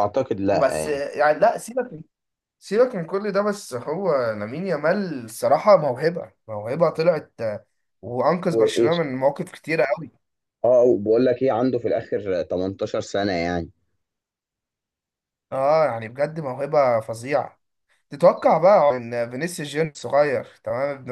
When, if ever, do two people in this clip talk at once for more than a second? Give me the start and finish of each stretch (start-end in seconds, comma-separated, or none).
none